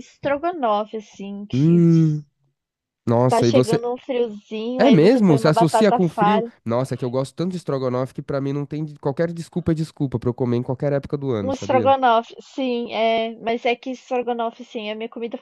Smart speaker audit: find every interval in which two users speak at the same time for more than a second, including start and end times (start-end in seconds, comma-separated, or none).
4.8-6.5